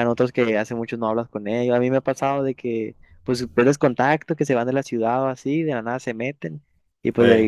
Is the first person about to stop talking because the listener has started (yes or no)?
no